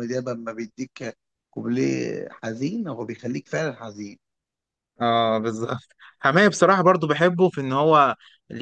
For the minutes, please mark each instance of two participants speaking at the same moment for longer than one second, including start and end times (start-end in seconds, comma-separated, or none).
none